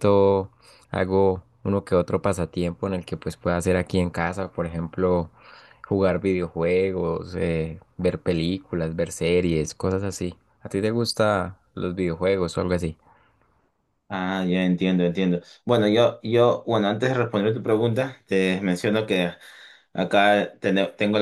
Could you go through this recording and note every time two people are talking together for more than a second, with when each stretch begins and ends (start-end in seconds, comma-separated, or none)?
none